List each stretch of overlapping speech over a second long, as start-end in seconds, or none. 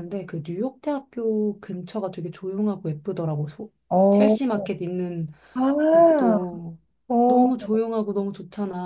none